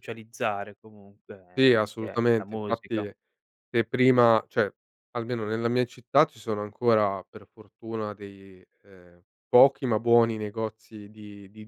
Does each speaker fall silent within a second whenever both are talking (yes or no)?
no